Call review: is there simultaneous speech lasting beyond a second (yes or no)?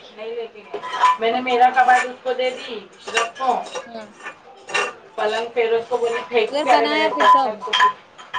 yes